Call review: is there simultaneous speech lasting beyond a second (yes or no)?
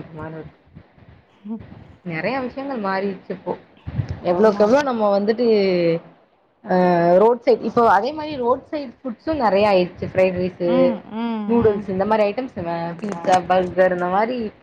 no